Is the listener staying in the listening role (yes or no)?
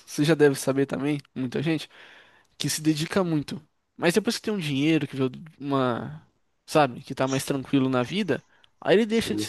yes